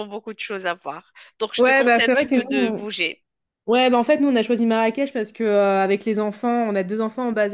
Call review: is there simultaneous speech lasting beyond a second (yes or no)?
yes